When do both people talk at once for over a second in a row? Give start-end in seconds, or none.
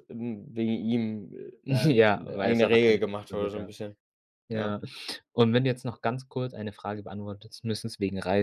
1.7-3.7